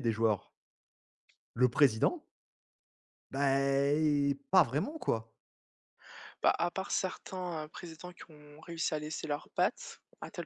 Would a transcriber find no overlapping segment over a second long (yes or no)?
yes